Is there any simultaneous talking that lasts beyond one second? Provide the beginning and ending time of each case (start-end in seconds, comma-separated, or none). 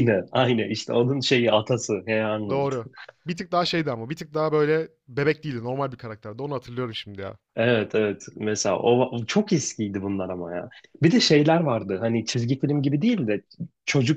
none